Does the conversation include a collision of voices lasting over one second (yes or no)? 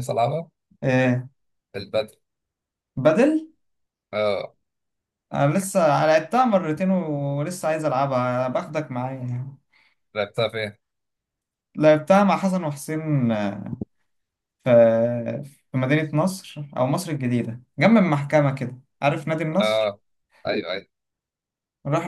no